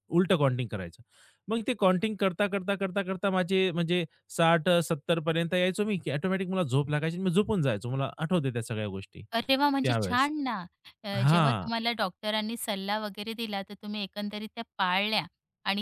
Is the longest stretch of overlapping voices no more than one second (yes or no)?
yes